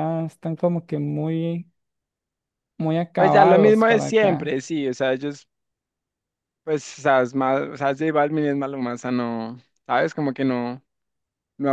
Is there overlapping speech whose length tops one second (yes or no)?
yes